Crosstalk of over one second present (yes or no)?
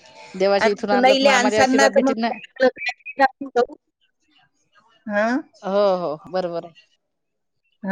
yes